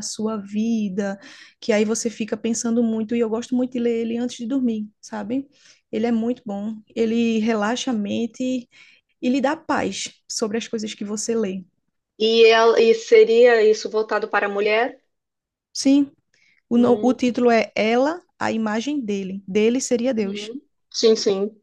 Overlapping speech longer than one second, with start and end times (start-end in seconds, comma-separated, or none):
none